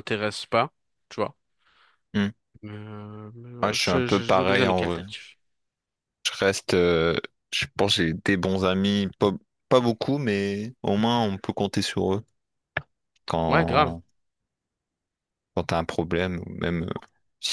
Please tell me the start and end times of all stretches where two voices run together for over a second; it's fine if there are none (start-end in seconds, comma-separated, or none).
3.6-5.0